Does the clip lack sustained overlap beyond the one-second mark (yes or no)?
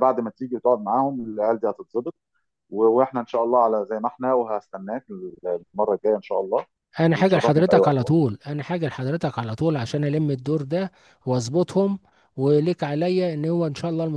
no